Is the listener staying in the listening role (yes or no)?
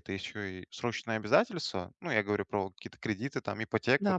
yes